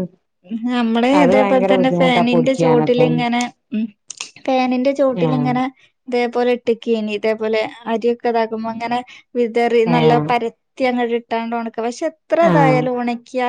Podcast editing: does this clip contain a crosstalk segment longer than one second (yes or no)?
yes